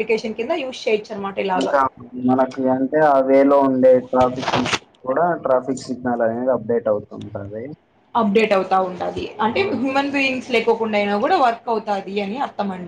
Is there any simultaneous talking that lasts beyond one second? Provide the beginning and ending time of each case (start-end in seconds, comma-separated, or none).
none